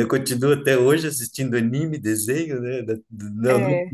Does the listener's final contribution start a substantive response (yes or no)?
no